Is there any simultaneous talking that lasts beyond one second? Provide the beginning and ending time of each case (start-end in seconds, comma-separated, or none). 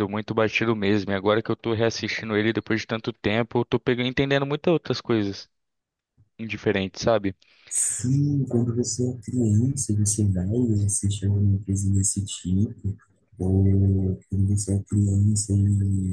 none